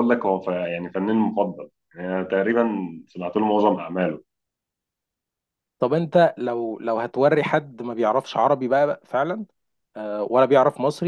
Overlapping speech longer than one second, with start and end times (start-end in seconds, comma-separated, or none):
none